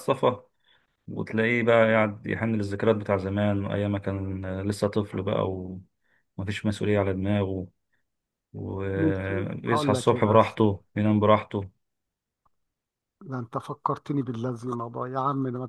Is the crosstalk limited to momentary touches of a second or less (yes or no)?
no